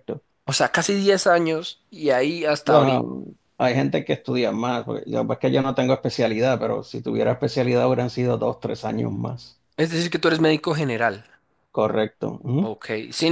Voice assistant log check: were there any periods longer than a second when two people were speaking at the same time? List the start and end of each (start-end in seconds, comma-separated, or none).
none